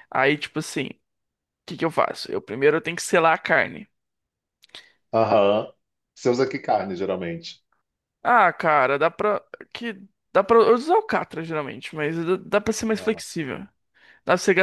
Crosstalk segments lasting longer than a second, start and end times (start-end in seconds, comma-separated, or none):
none